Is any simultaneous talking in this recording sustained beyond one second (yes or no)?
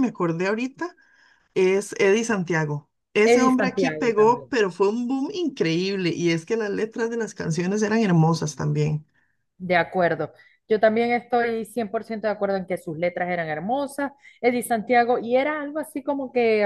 yes